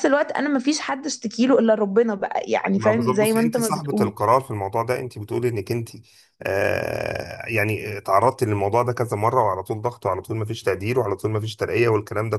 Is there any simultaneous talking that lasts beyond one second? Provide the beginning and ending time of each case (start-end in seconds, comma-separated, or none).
2.8-4.1